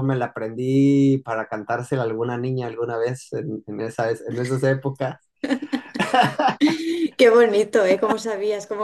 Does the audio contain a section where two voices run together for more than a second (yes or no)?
no